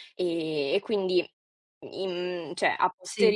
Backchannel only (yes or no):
yes